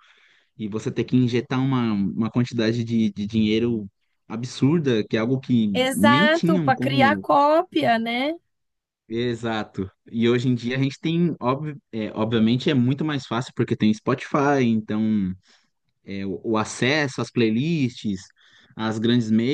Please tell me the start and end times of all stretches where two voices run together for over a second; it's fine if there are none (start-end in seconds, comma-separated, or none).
5.7-7.3